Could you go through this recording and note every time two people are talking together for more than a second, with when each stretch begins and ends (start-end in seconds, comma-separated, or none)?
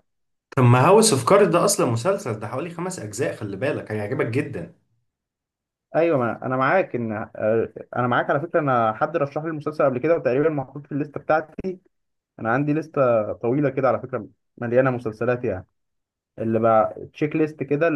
none